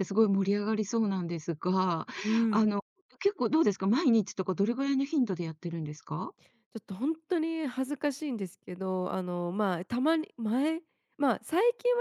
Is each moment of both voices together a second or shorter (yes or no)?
yes